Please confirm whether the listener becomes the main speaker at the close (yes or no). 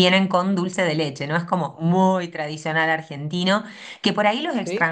no